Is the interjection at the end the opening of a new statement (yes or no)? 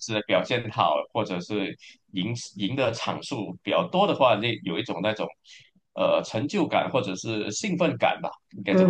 yes